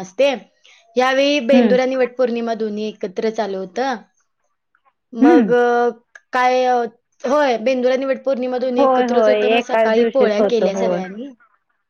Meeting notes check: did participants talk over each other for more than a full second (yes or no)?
yes